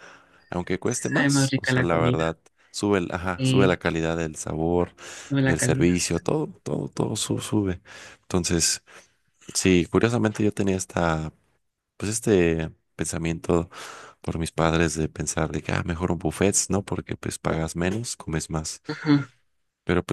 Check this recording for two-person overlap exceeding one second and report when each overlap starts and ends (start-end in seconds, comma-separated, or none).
0.8-2.2